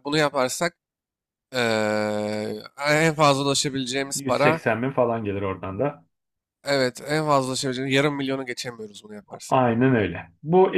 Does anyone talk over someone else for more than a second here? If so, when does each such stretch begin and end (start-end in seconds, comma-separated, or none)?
none